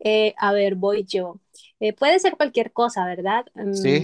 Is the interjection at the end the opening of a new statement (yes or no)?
yes